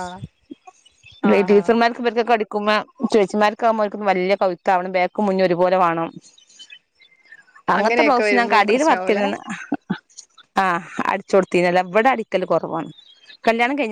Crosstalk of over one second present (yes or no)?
yes